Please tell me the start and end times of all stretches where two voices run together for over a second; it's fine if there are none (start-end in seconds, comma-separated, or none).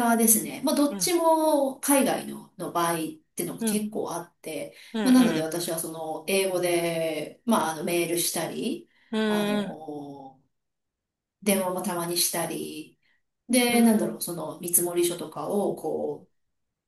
none